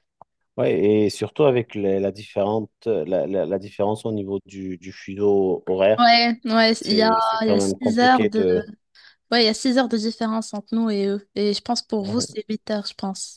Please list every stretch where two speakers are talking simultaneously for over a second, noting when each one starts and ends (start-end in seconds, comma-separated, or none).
6.7-8.4